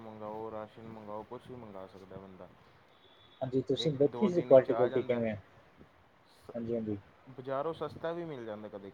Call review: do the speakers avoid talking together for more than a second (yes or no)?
no